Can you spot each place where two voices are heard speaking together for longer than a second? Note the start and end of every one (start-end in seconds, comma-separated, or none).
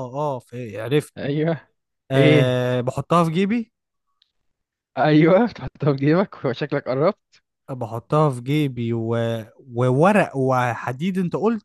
none